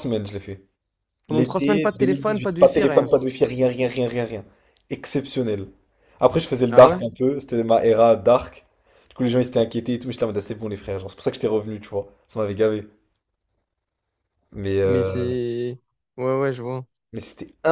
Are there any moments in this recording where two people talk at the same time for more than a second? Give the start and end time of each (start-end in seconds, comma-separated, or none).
1.3-3.1